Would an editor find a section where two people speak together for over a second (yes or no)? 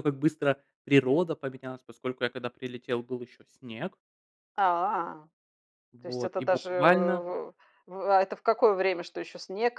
yes